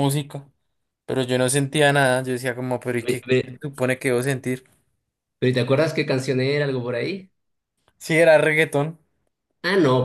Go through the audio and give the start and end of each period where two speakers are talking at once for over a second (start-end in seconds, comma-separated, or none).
none